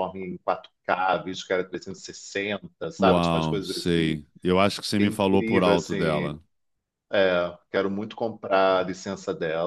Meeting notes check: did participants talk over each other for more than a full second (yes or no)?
yes